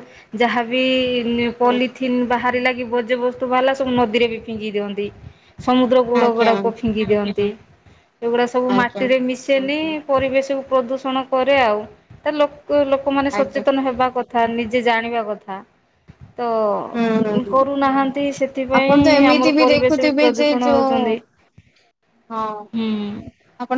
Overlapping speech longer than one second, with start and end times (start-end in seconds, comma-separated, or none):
18.8-21.0